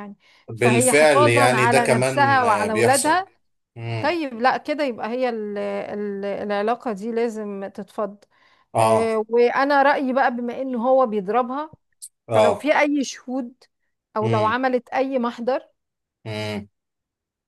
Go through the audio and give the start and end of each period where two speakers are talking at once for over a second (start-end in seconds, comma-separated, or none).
0.6-3.2